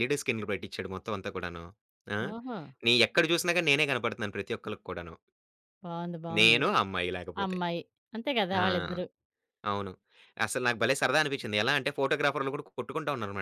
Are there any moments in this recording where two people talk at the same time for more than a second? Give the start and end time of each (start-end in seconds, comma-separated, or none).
none